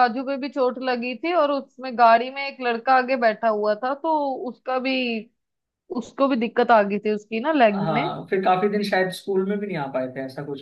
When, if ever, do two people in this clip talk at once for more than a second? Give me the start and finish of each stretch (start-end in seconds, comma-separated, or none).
none